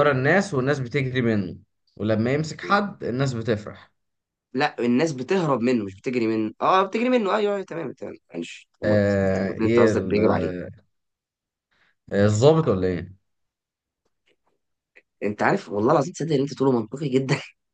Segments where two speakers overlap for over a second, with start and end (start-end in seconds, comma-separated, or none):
8.8-10.2